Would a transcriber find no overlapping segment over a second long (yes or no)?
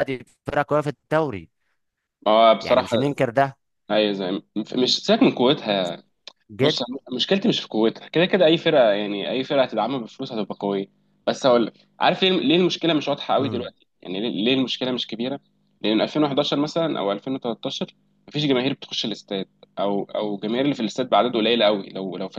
yes